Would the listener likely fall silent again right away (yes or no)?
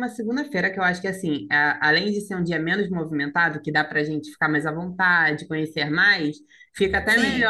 yes